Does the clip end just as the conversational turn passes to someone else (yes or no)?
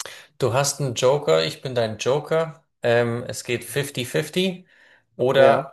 no